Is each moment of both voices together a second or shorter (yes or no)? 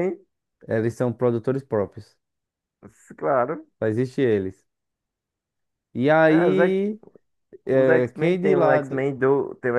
no